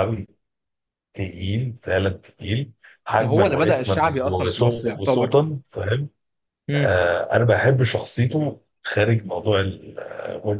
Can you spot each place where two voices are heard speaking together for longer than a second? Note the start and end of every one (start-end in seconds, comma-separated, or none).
3.2-5.3